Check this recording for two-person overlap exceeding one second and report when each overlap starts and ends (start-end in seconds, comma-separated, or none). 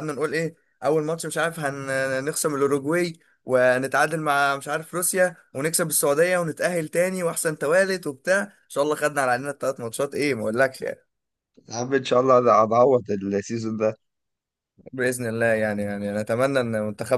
none